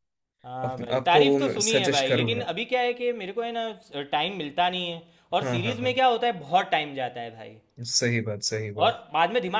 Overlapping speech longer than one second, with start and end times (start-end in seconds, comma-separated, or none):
0.6-2.5